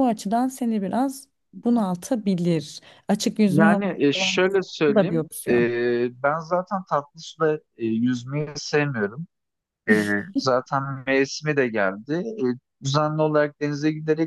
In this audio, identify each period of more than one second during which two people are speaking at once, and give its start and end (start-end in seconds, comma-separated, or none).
3.5-5.7